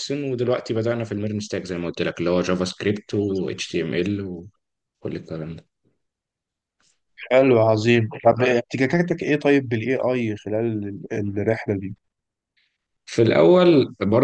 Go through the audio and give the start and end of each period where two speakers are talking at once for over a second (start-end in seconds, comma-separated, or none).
none